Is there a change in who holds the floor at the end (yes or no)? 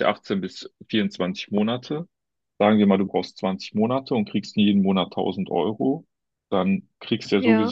no